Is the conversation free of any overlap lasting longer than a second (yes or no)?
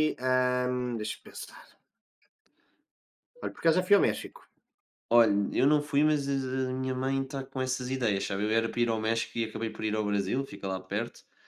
yes